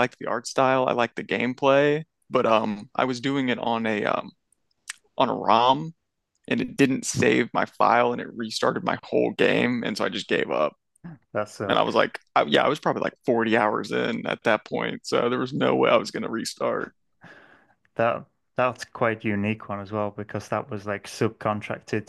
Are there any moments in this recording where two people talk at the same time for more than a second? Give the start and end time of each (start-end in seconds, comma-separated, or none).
none